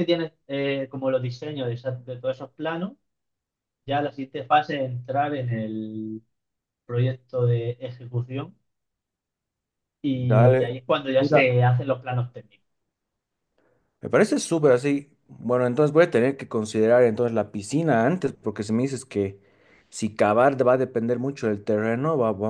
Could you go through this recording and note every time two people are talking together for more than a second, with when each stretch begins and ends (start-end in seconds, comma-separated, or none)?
10.1-11.5